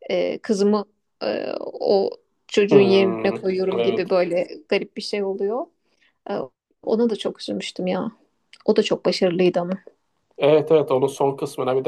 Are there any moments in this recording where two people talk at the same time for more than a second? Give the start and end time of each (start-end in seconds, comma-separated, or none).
2.7-4.2